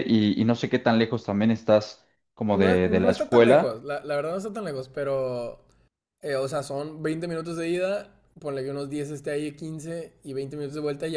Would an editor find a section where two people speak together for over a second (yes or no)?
yes